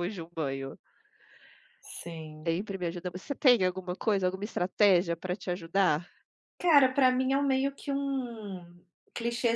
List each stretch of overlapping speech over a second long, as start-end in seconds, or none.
none